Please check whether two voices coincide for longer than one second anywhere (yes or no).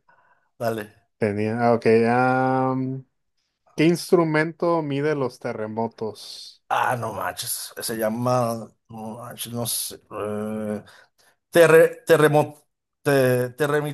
no